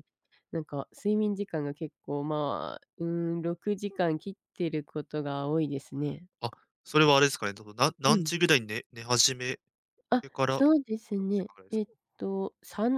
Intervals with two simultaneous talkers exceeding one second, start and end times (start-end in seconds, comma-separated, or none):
10.2-12.0